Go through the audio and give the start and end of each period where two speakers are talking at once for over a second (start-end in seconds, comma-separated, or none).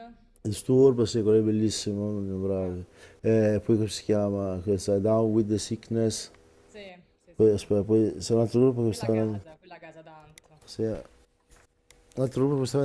none